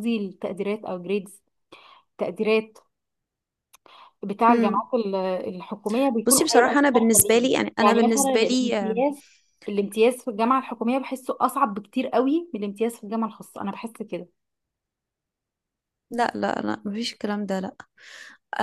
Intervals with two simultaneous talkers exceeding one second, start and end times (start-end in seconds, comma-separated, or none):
6.2-9.0